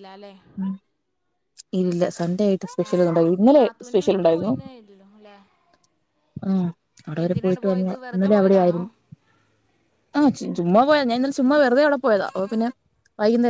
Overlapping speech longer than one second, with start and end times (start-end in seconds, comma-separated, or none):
2.9-4.5, 7.2-8.8